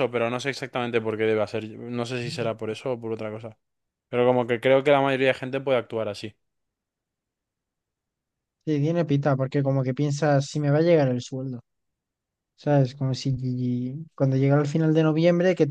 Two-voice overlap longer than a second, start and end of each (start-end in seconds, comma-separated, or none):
none